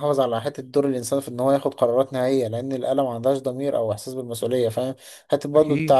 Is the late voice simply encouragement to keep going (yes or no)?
yes